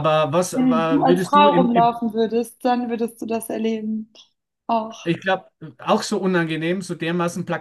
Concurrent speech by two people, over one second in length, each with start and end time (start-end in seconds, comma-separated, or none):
0.5-1.9